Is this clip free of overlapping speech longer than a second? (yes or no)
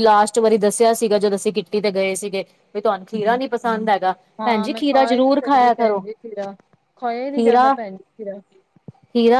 no